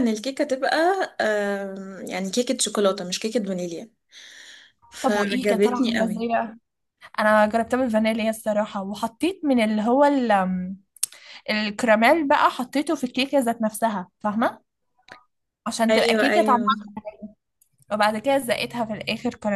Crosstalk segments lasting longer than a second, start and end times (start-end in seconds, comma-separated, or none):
5.0-6.2